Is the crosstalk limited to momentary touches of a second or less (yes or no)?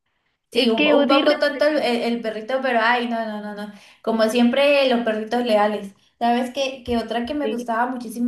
no